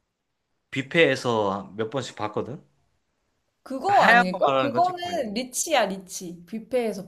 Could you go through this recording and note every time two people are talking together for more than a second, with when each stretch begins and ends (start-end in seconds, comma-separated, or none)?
3.9-5.4